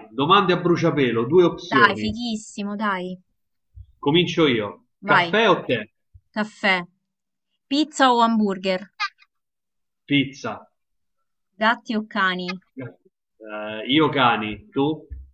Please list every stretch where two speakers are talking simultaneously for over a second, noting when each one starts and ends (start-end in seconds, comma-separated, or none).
none